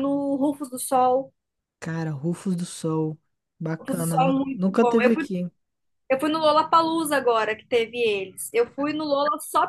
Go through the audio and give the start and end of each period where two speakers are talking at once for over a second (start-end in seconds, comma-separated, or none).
3.8-5.2